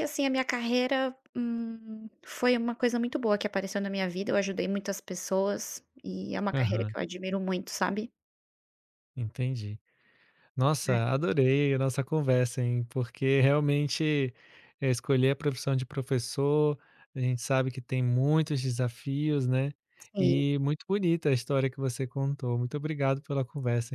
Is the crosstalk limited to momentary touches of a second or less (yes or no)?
yes